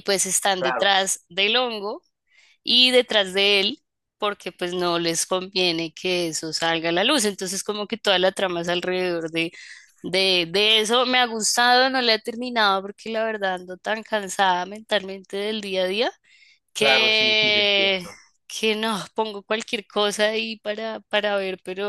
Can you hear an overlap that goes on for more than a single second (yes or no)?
yes